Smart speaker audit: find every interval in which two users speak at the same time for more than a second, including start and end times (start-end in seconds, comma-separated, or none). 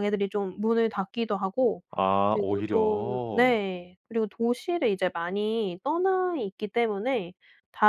2.3-3.6